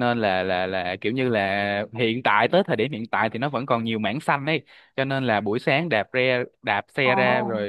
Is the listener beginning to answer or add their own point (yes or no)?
no